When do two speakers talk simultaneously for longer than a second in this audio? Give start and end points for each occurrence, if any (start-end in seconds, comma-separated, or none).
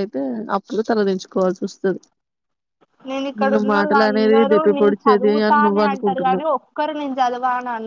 4.1-6.5